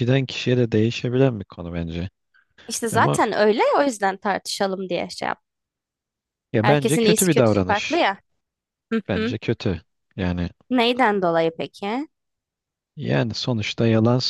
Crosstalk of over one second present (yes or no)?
yes